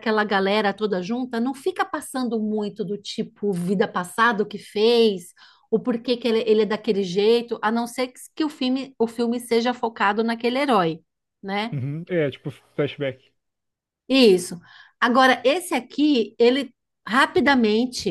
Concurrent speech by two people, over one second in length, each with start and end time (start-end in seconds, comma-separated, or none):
none